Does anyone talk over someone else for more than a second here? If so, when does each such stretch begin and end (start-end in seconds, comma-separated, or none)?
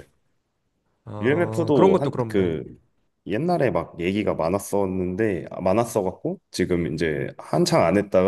1.2-2.5